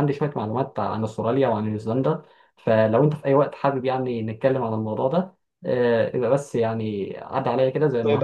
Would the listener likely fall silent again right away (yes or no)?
no